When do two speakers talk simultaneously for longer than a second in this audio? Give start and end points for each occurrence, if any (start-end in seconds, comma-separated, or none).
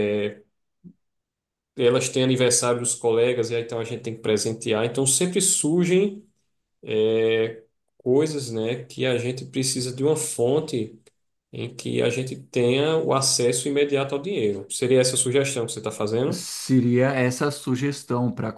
none